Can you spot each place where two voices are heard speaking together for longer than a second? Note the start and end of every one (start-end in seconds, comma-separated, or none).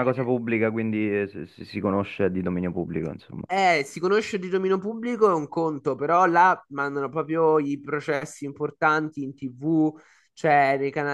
none